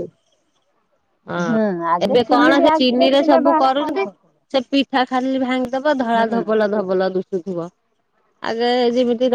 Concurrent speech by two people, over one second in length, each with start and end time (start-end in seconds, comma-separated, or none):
2.1-4.0